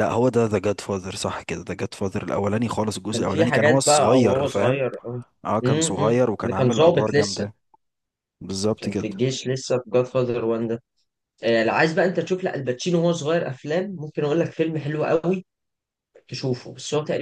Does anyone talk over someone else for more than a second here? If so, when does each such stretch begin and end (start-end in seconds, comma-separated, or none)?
3.1-4.8, 5.6-7.5